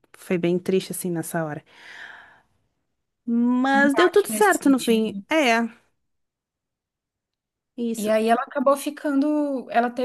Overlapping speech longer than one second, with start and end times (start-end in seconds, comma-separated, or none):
3.9-5.3